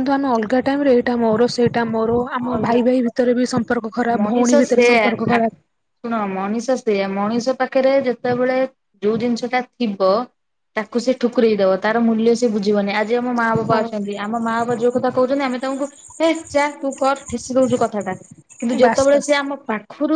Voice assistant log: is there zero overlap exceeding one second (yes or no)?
no